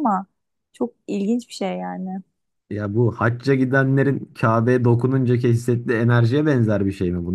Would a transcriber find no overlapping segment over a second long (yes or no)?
yes